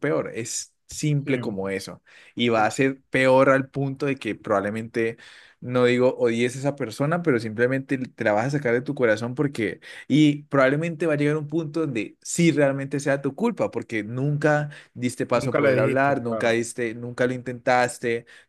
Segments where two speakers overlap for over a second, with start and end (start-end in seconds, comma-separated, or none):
15.3-16.6